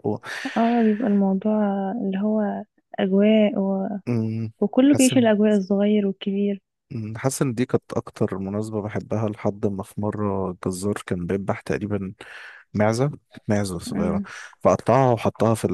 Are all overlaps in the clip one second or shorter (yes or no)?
yes